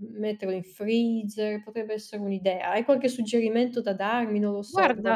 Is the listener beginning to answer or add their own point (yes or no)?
yes